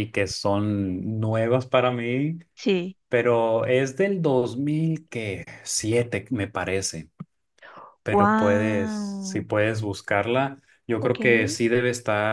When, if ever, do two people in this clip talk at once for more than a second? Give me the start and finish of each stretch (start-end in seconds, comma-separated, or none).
8.1-9.5